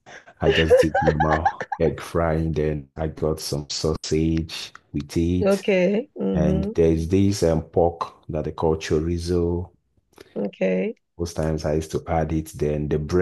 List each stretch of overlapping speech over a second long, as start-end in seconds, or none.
none